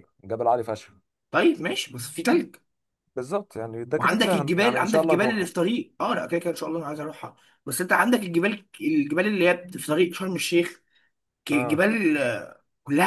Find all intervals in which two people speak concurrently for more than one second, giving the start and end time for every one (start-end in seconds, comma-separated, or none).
3.9-5.5